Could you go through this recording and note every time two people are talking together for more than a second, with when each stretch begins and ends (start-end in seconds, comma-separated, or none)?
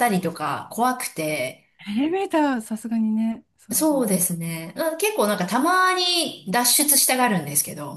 none